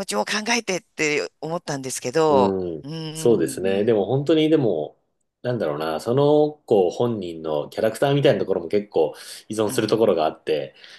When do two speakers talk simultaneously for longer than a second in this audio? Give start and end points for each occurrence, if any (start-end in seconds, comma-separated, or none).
2.3-3.9